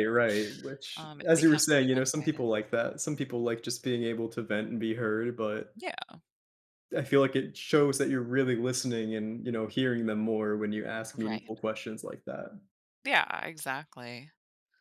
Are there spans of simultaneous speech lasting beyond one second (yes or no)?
yes